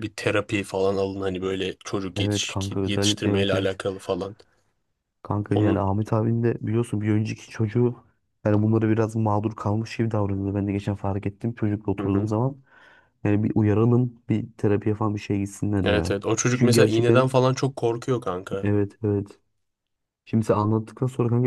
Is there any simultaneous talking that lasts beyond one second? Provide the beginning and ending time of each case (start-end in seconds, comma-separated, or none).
2.2-3.8, 15.8-17.3